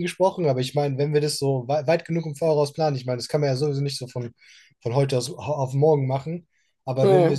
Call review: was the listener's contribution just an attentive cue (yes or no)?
yes